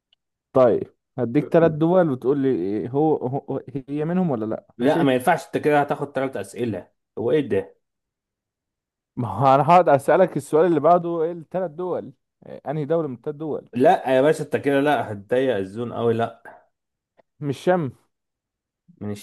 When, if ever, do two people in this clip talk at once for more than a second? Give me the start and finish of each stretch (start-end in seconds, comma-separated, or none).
none